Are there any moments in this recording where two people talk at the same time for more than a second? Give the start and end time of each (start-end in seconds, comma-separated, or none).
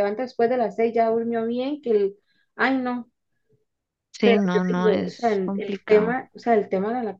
4.2-6.2